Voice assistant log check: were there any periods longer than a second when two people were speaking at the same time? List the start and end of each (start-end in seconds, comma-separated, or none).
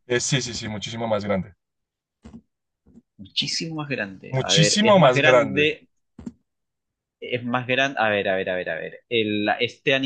4.3-5.8